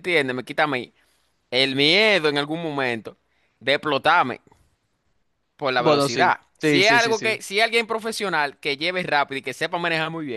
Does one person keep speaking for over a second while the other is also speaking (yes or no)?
yes